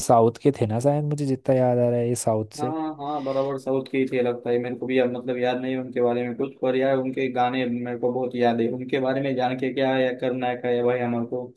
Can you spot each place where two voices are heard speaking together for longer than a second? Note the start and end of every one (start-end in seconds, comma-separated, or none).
none